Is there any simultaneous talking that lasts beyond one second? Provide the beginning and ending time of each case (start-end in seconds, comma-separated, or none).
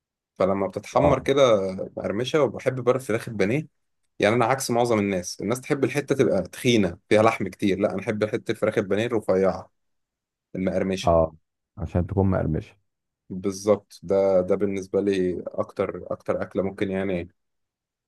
none